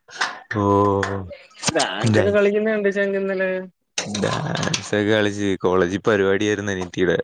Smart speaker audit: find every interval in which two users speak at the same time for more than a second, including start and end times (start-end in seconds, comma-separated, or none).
none